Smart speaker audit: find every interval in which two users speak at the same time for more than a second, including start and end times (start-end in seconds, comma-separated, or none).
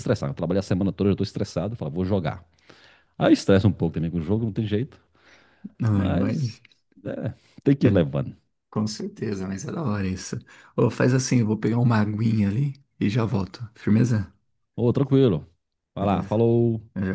none